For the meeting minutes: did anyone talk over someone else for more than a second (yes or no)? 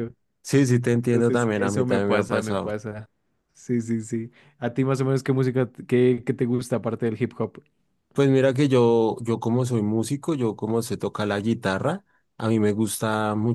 yes